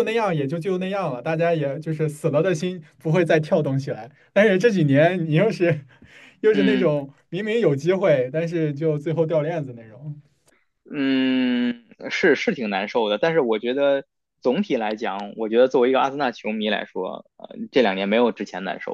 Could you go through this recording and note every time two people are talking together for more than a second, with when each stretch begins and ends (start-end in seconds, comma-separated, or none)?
none